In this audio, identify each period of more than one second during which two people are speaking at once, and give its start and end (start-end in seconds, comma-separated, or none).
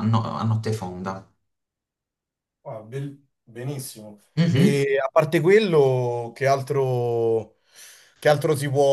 none